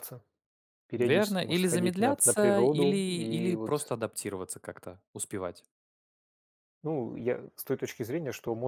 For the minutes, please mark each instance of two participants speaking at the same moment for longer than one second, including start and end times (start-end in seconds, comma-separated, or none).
1.0-3.9